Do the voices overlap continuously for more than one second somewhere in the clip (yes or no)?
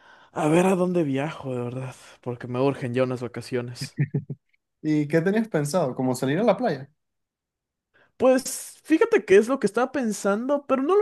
no